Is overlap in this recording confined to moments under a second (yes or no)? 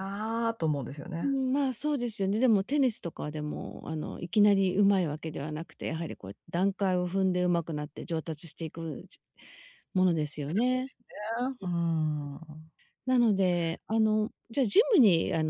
yes